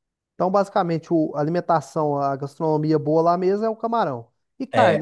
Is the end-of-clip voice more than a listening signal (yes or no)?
yes